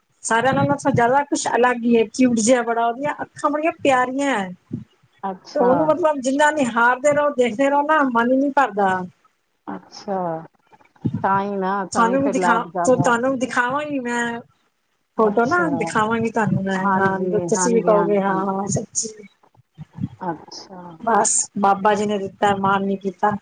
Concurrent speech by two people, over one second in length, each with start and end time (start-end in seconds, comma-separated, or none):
16.8-18.4